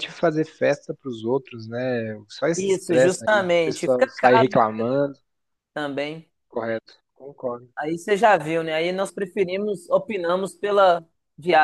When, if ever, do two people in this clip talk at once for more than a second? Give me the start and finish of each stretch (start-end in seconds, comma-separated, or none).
2.5-4.6